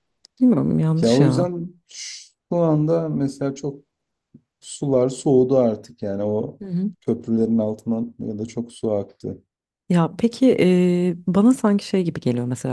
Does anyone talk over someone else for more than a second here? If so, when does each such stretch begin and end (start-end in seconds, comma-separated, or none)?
none